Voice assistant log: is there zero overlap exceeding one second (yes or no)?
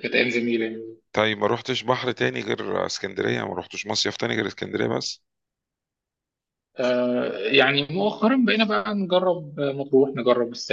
yes